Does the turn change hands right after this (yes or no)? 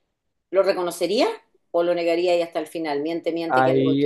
yes